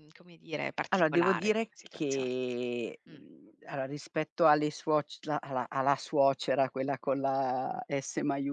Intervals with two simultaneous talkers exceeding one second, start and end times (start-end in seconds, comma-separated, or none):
0.9-2.3